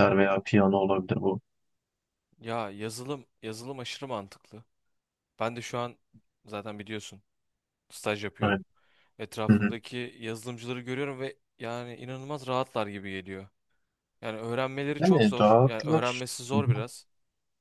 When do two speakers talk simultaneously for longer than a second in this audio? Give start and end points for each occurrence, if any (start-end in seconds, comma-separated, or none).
15.0-16.8